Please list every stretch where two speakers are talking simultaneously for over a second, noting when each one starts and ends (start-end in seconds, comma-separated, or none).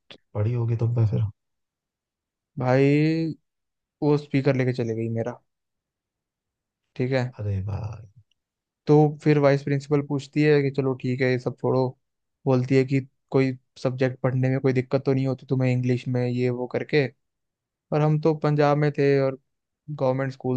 none